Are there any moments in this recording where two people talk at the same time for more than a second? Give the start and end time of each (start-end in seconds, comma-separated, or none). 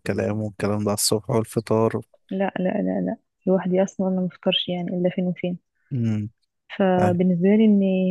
none